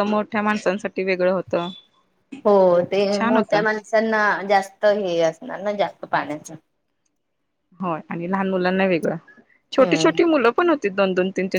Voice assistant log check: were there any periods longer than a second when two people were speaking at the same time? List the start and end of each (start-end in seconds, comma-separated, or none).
none